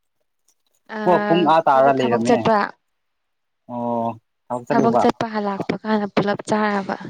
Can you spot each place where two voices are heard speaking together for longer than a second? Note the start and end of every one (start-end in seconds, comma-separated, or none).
1.1-2.4